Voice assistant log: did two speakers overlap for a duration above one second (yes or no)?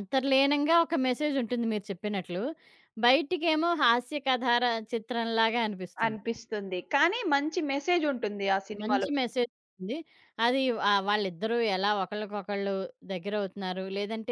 no